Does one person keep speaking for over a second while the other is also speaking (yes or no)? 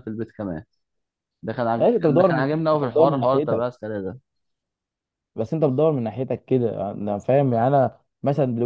yes